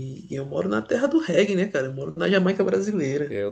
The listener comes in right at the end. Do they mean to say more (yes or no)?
yes